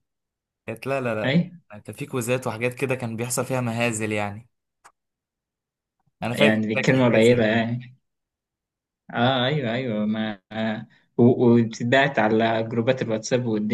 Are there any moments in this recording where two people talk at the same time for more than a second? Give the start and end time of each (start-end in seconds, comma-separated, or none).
6.3-7.6